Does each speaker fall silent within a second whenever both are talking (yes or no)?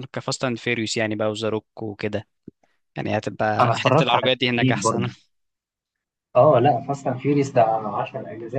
no